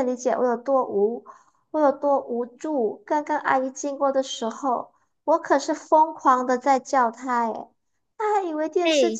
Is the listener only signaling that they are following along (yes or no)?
yes